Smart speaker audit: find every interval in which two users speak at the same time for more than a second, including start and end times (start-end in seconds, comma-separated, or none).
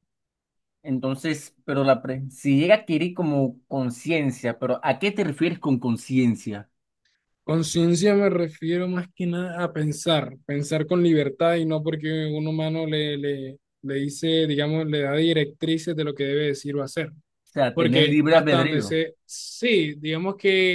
17.7-19.0